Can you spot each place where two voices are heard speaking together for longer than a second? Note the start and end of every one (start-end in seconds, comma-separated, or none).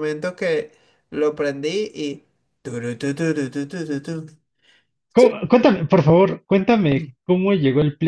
none